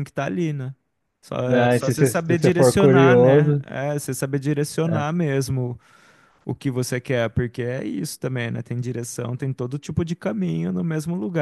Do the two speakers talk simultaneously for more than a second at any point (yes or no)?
yes